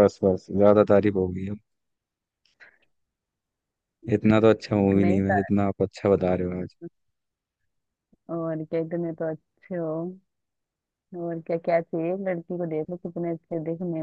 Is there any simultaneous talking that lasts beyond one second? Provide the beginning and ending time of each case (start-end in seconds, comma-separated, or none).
none